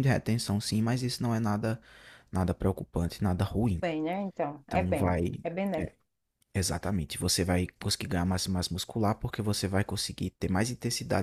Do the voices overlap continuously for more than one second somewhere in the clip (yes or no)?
no